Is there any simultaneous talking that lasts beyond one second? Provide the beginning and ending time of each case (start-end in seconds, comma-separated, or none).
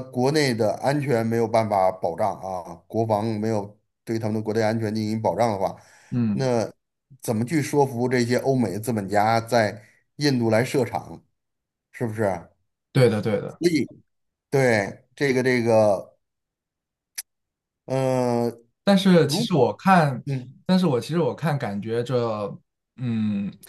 none